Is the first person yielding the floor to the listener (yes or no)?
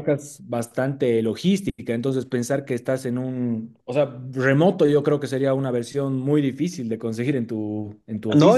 yes